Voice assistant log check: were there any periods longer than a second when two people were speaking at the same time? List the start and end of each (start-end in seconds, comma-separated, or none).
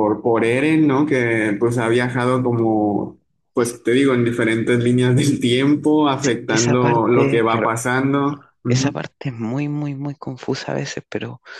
6.1-7.7